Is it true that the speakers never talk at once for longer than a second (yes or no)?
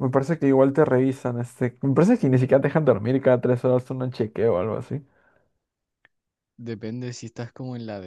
yes